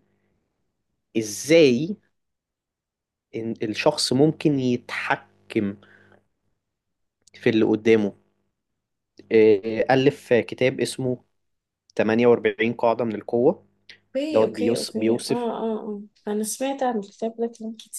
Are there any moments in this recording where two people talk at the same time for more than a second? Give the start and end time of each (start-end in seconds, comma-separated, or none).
14.3-15.5